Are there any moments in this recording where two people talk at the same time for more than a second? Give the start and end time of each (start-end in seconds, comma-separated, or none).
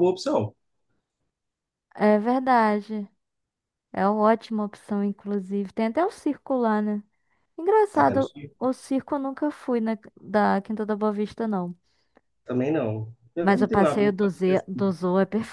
13.4-14.9